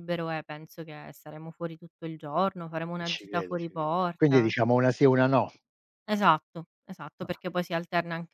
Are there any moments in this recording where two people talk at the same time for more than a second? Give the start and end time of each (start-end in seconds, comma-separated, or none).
3.0-4.5